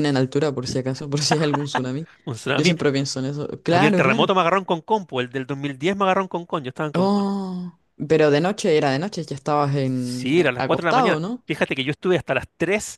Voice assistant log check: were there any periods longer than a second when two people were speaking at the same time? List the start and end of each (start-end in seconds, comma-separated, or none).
9.8-11.4